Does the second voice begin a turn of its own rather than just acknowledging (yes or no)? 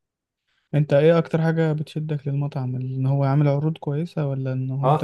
yes